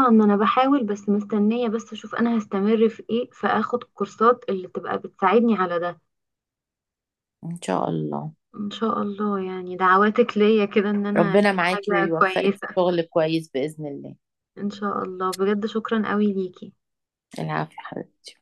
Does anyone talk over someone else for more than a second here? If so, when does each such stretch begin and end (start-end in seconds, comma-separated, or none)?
11.2-12.7